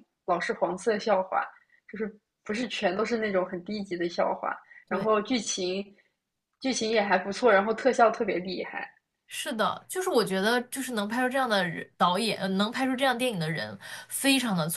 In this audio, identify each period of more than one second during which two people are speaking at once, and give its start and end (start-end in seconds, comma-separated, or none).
none